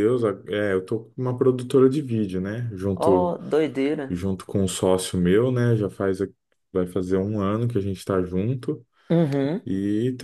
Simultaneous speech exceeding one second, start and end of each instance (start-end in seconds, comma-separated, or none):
none